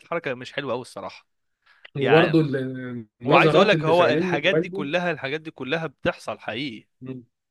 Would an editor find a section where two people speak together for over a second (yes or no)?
yes